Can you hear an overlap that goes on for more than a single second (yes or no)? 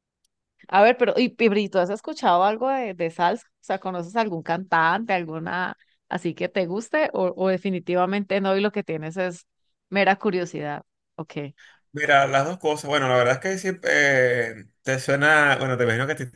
no